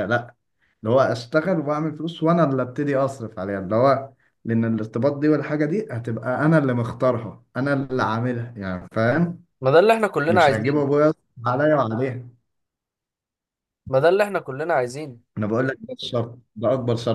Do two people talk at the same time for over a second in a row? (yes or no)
no